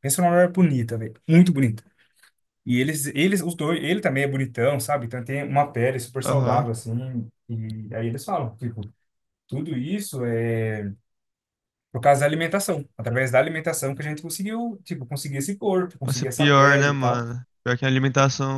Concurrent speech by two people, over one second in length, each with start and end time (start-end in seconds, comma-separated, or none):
16.0-17.3